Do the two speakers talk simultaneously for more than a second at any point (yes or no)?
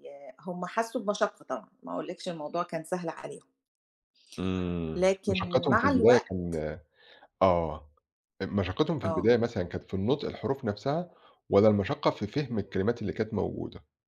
yes